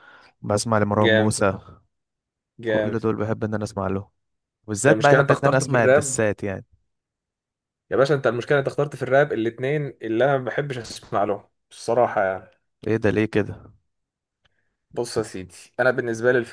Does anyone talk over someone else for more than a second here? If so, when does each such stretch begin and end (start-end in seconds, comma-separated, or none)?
4.8-6.2